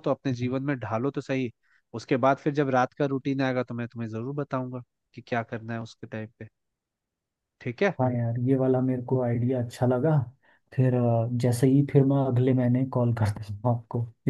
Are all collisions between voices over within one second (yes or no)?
yes